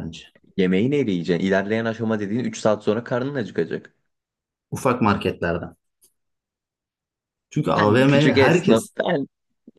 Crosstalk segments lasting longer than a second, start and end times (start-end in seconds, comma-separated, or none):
7.8-8.9